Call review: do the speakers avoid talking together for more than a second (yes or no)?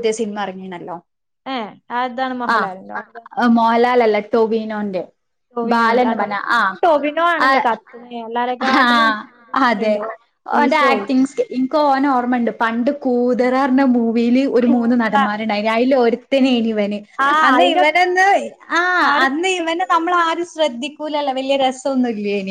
yes